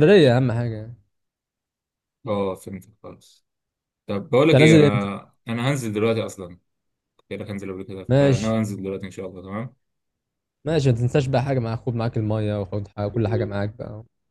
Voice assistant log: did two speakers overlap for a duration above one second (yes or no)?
no